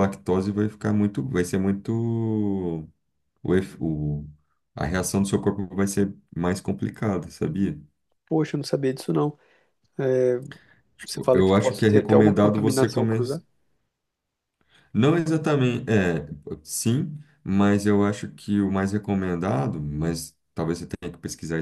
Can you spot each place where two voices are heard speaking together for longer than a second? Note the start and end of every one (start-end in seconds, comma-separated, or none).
11.1-13.2